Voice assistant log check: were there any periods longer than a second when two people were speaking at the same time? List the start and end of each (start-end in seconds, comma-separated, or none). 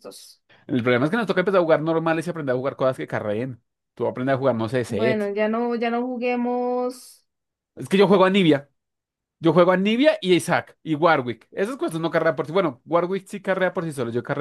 none